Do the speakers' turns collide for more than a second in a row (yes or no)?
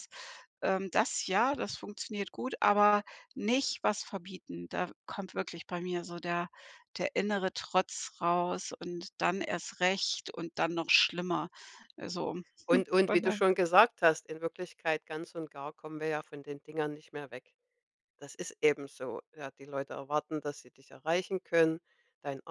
no